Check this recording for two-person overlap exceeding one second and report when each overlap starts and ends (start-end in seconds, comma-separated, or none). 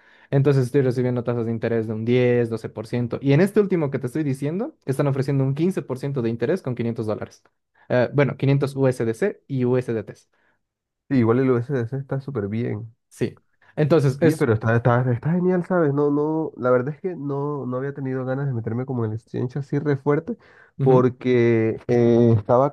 none